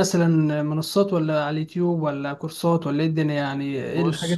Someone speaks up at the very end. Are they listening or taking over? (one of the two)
taking over